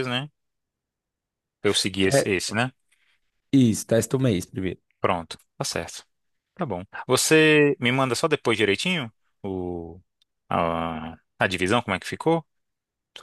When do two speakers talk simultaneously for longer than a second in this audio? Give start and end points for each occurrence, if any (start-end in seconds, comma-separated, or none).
none